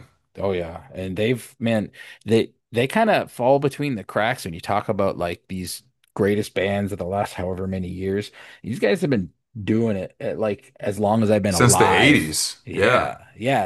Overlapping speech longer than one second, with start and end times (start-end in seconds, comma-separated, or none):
11.5-13.1